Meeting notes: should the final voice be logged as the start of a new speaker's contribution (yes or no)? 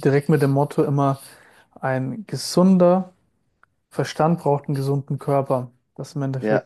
no